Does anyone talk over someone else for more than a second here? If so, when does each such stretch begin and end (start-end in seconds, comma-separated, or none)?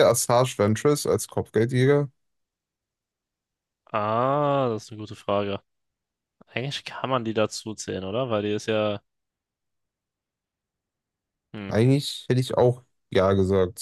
none